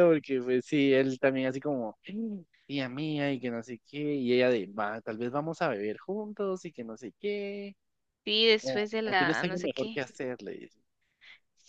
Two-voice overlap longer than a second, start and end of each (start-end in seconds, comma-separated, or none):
8.6-10.2